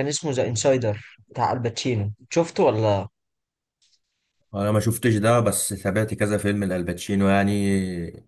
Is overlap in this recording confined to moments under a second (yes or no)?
yes